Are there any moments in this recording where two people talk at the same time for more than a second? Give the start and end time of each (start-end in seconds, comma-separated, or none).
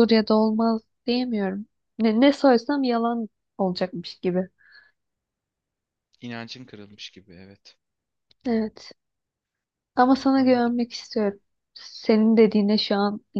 none